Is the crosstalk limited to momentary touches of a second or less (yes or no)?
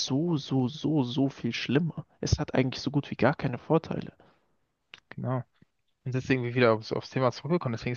yes